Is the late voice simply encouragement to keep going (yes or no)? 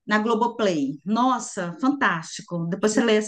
yes